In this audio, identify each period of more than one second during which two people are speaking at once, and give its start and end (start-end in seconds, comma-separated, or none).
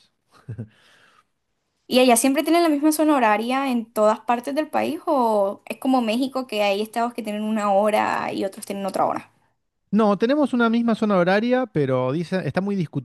none